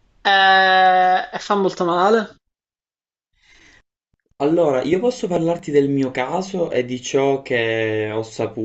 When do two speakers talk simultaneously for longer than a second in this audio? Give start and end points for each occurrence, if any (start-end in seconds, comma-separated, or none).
none